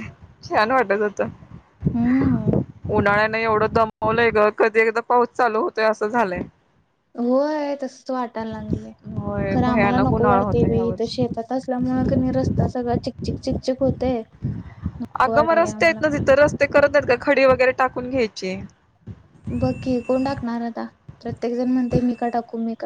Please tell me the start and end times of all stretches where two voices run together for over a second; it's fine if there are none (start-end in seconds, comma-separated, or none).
9.5-11.3